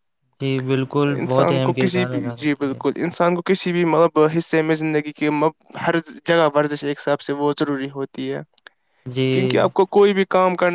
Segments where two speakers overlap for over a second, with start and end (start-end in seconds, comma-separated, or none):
1.2-2.8